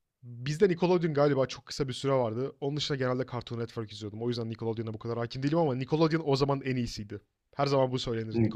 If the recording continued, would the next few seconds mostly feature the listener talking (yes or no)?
yes